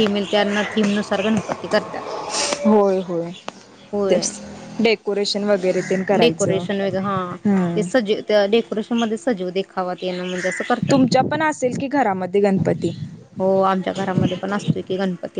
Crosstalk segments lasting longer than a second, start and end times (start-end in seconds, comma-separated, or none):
none